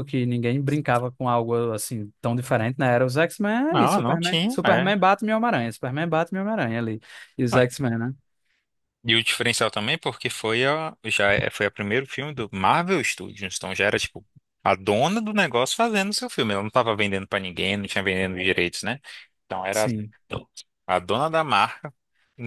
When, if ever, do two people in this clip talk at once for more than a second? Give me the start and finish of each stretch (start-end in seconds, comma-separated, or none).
3.7-4.9